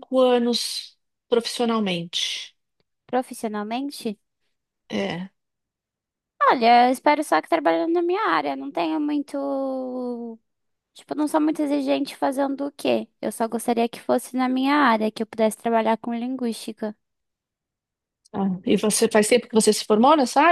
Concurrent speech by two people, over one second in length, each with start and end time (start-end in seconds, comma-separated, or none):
none